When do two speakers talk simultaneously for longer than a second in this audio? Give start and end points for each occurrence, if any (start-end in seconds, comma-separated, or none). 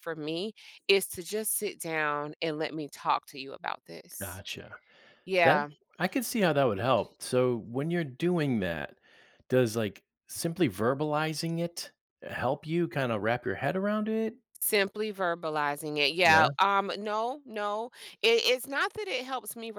none